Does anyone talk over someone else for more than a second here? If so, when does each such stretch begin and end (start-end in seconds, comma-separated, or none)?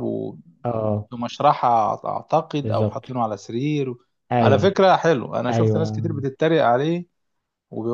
none